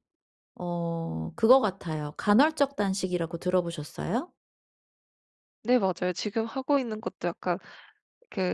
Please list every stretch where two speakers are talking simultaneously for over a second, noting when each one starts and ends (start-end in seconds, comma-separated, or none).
none